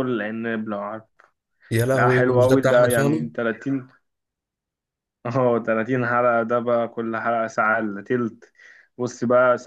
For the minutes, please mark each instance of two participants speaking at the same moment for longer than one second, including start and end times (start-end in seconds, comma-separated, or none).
1.9-3.3